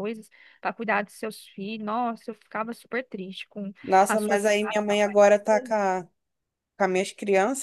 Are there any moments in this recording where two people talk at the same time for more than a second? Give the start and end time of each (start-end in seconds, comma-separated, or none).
3.8-5.7